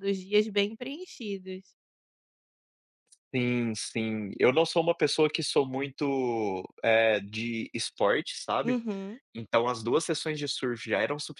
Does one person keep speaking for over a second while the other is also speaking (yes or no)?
no